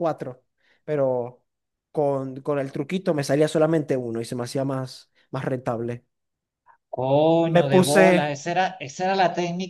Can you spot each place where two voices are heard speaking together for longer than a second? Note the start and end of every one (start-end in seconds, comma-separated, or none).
none